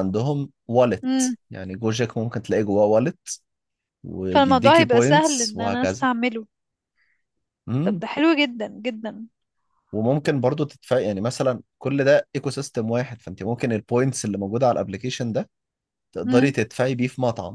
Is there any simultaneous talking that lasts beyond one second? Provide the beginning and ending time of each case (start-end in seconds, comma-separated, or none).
4.3-6.0